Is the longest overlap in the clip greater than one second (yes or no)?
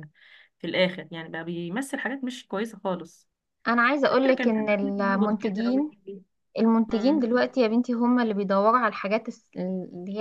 yes